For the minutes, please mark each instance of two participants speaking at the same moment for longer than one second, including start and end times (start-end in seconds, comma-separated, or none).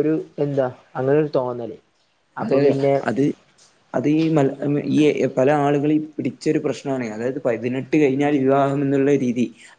none